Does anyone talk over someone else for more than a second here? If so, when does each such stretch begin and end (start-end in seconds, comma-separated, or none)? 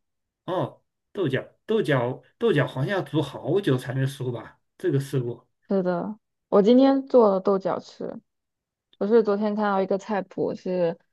none